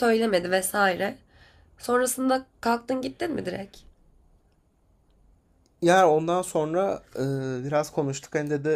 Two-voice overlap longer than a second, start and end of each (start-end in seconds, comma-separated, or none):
none